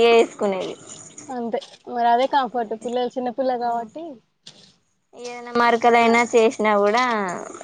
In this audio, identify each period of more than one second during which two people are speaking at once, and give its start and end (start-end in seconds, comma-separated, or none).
none